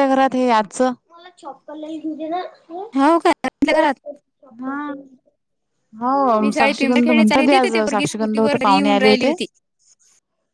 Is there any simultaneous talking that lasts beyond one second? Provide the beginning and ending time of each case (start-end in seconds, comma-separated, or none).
6.4-9.3